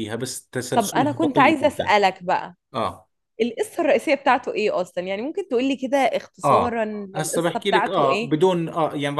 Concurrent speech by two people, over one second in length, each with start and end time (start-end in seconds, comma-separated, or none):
0.7-1.9, 6.4-8.3